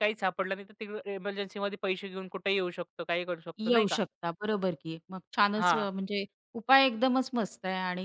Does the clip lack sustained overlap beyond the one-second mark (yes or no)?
yes